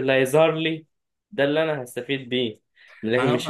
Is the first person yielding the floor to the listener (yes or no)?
no